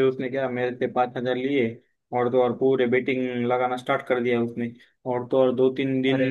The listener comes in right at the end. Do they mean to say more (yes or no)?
no